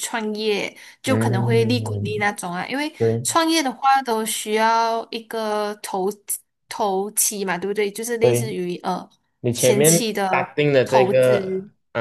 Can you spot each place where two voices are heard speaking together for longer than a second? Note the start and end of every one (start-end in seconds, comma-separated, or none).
1.0-2.3, 9.5-11.3